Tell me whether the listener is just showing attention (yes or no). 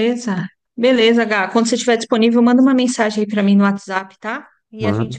yes